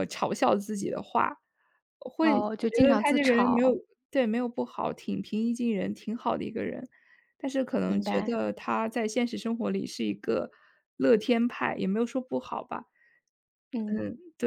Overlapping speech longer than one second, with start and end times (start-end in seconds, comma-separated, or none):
2.2-3.7